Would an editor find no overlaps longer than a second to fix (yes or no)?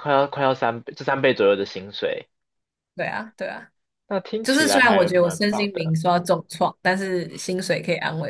no